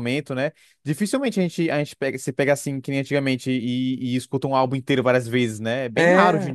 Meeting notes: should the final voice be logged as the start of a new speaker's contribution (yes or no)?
yes